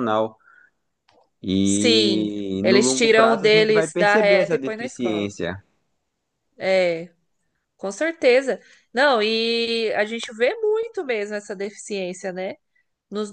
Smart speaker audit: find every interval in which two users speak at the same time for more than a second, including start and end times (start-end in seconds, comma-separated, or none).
1.6-5.3